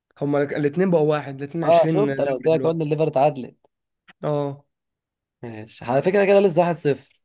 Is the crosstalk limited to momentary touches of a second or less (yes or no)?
no